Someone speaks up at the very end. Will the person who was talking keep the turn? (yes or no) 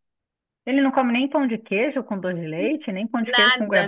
no